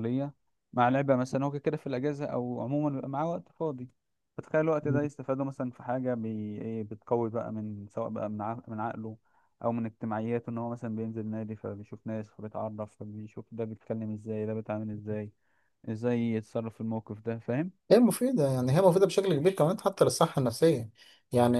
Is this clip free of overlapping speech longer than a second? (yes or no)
yes